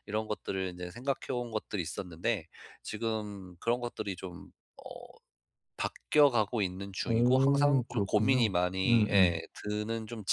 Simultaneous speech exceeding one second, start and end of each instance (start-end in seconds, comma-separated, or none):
7.1-9.4